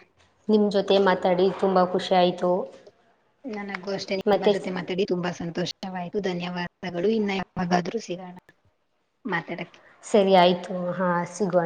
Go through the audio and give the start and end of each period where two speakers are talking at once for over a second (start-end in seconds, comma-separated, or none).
none